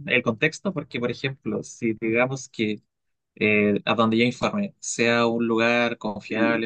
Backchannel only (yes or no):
yes